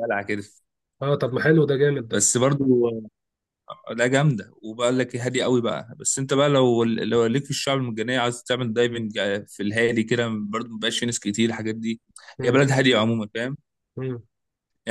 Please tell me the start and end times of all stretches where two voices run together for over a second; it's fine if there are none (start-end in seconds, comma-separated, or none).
none